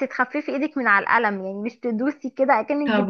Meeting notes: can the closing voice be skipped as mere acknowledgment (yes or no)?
no